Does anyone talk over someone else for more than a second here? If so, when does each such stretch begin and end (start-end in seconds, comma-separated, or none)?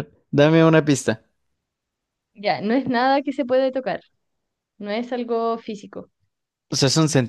none